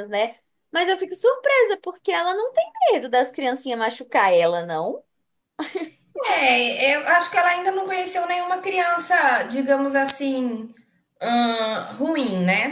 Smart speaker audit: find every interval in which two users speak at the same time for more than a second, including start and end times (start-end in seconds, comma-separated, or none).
none